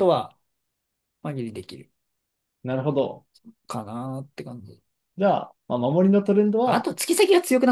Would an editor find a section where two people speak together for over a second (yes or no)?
no